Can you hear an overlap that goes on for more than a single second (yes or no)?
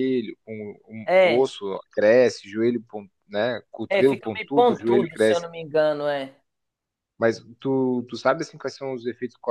yes